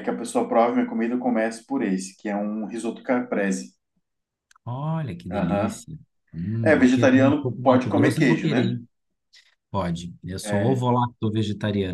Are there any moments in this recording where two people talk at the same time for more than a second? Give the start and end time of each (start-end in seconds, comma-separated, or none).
6.6-8.8